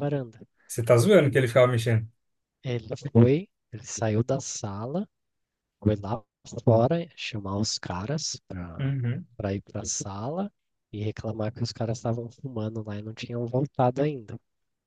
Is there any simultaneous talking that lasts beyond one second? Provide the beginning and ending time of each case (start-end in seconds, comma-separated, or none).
none